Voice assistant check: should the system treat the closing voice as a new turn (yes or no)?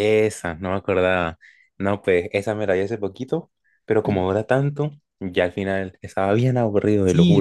yes